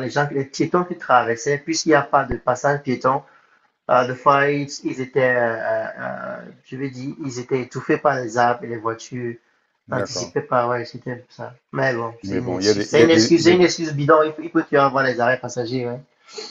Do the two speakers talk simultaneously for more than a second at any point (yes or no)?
yes